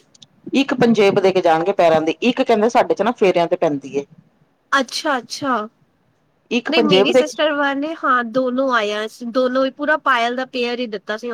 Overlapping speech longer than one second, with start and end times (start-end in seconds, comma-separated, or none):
none